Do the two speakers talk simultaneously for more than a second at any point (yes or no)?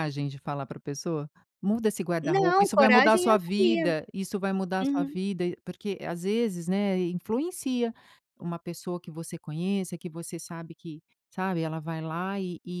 yes